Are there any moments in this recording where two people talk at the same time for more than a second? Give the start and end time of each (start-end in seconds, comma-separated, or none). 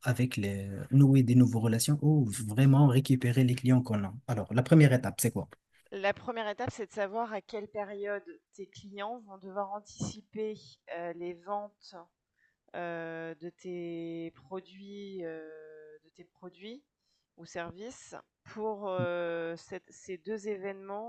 none